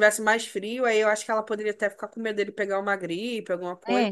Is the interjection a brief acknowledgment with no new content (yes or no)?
no